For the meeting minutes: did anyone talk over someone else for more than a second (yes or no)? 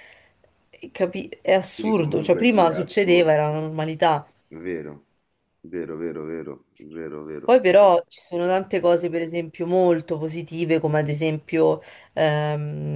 yes